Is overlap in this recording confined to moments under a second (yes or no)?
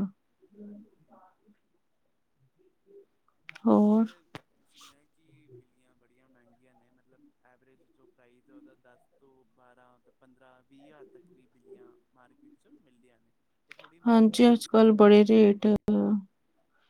no